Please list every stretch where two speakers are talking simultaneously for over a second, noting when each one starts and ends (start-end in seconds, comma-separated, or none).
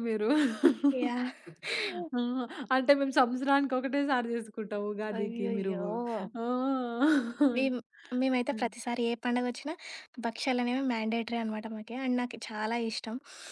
none